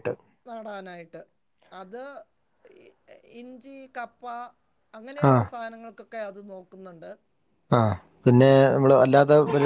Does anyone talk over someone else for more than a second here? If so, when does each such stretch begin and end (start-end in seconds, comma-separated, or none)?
none